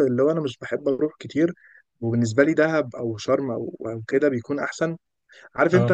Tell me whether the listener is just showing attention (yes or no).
yes